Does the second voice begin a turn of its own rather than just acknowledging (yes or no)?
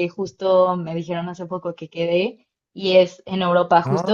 no